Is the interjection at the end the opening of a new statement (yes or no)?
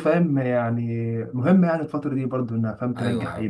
yes